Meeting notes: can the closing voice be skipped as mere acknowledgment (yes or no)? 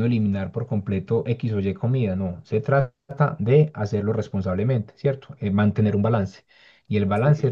yes